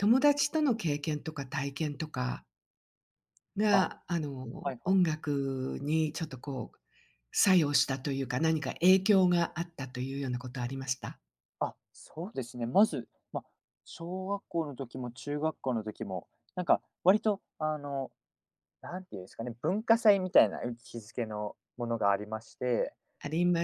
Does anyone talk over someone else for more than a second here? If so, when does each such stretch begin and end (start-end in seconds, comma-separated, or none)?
none